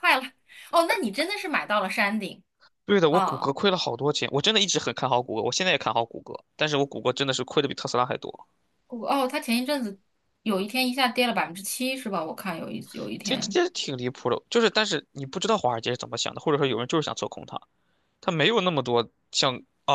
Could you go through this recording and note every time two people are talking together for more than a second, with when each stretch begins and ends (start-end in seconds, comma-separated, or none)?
none